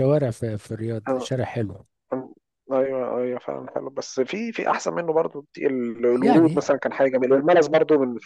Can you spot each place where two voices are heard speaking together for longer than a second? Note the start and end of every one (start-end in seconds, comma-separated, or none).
none